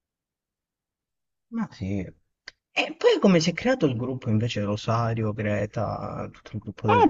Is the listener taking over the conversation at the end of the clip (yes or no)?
yes